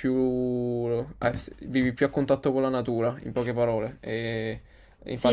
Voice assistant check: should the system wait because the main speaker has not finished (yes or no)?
no